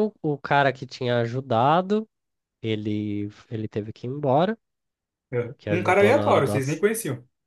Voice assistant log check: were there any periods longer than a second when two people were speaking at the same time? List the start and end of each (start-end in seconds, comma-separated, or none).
5.6-6.8